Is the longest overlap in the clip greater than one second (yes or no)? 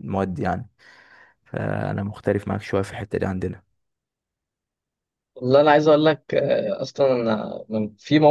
no